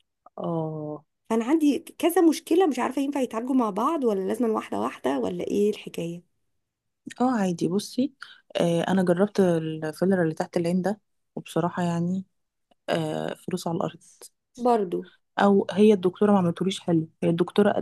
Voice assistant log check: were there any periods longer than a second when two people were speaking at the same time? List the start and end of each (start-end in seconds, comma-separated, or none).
none